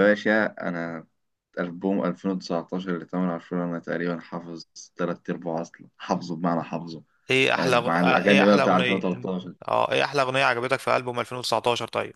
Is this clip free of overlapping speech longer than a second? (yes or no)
no